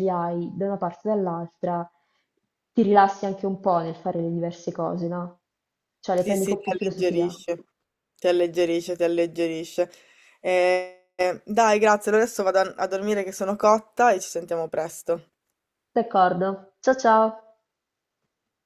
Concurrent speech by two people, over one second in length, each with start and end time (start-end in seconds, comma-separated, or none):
6.1-7.4